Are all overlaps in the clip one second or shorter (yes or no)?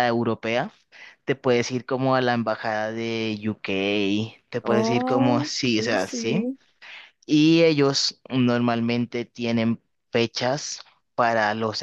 no